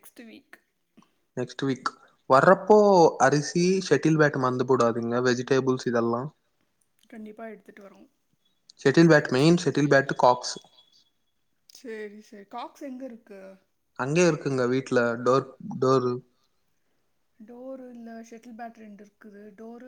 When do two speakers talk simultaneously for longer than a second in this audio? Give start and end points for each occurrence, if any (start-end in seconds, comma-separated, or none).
none